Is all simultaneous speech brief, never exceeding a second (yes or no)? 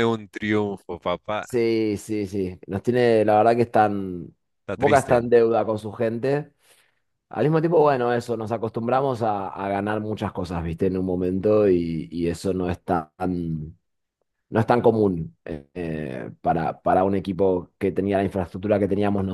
yes